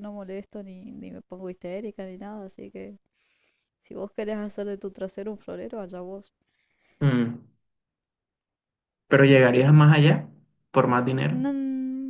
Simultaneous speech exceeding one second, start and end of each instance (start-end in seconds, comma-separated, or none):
none